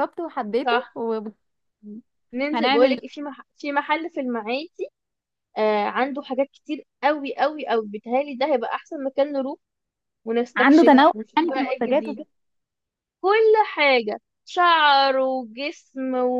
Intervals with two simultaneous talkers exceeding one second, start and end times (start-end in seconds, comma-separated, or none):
10.6-12.2